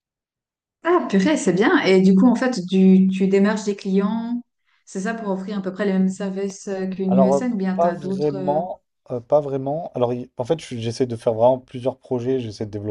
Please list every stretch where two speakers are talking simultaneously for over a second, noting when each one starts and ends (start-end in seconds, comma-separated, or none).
7.1-8.6